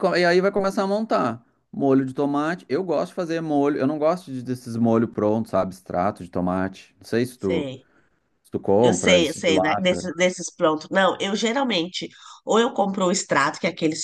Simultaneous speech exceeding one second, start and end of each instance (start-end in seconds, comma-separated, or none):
8.8-10.1